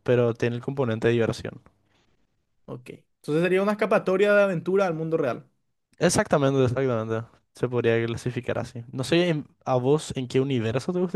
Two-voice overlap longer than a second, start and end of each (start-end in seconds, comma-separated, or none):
none